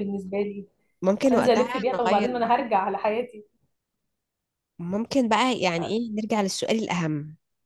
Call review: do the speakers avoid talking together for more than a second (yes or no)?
no